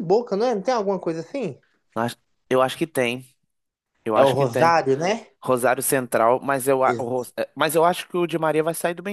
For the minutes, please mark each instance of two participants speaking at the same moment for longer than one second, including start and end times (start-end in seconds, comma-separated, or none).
none